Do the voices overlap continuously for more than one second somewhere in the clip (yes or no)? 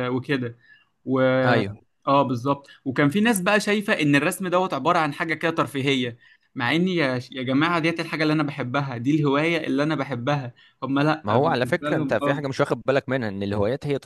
yes